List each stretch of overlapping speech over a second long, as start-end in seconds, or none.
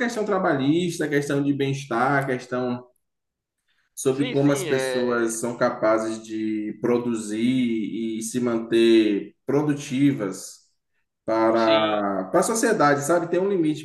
4.1-5.3